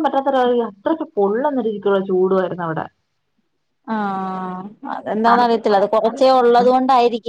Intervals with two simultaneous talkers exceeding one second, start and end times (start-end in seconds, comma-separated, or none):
5.3-6.6